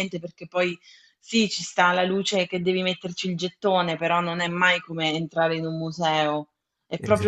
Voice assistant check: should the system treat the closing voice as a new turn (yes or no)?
no